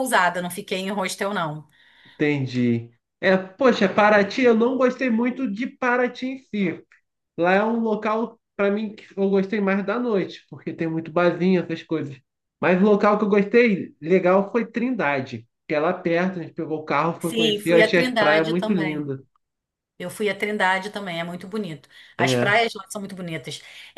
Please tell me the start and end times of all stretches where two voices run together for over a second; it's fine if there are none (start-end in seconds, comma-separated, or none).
17.2-19.1